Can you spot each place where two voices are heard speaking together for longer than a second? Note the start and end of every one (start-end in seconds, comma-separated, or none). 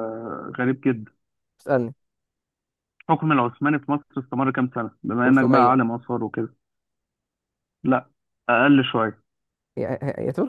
none